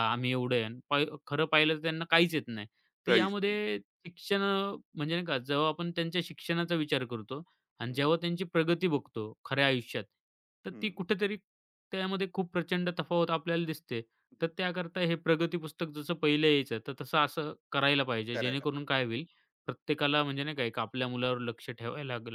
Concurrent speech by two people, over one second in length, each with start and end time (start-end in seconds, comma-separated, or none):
none